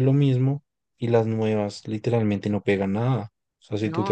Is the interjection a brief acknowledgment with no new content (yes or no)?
yes